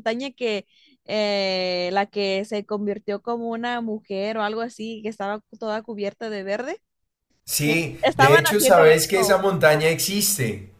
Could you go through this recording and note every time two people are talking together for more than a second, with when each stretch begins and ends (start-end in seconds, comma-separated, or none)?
7.6-9.4